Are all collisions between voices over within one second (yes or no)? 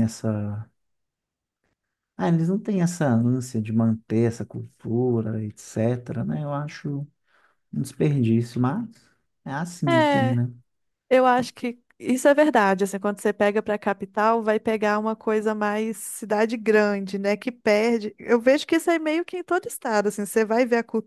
yes